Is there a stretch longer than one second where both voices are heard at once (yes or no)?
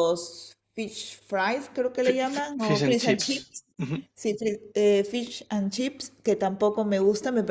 yes